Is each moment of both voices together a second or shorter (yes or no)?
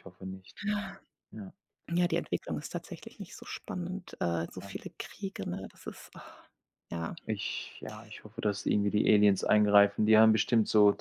yes